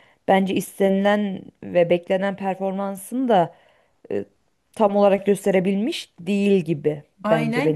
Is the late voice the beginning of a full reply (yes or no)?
yes